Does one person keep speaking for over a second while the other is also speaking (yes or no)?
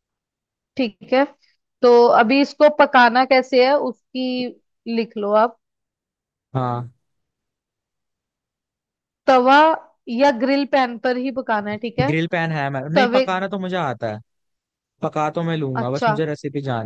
no